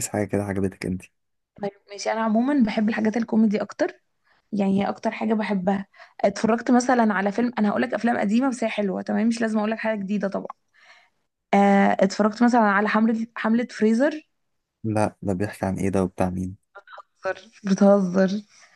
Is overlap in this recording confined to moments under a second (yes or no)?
yes